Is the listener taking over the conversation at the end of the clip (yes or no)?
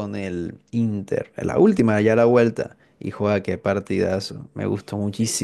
no